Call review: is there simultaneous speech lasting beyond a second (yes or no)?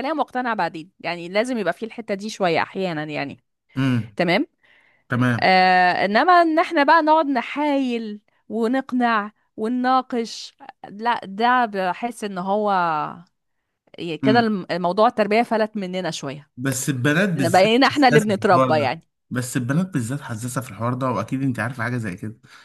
yes